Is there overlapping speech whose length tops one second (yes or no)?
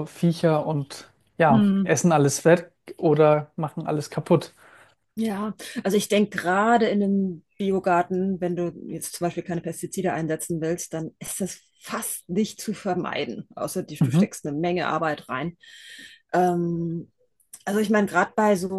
no